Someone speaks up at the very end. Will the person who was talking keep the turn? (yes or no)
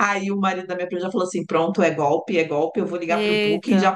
yes